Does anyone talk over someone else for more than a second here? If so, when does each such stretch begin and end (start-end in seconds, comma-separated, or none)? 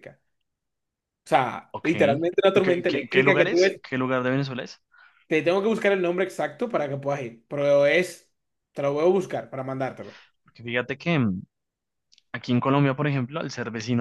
2.5-3.8